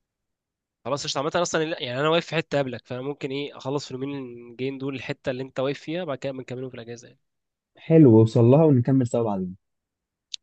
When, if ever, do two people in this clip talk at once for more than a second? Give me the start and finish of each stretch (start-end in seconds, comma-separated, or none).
none